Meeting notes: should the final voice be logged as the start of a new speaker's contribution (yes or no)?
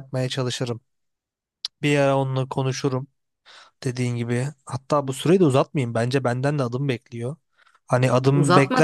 yes